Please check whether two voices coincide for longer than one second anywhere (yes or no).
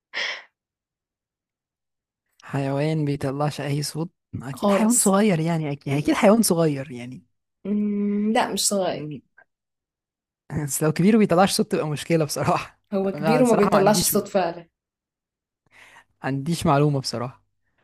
yes